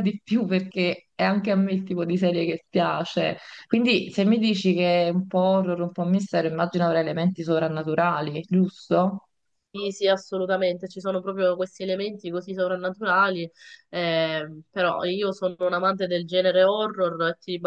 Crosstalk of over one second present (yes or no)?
no